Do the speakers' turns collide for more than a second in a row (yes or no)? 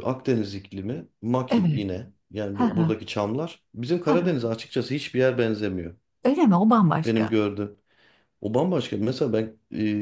no